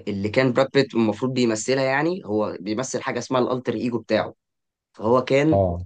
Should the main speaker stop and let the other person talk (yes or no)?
no